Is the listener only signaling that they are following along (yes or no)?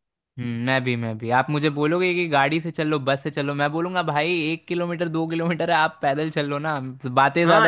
no